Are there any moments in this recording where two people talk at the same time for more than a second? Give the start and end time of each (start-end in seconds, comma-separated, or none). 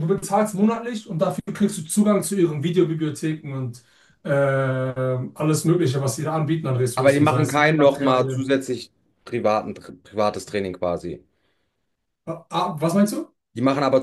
6.9-8.5